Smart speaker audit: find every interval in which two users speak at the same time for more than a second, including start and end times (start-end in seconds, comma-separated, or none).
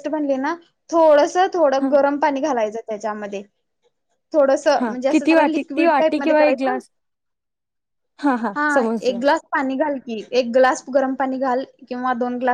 4.8-6.8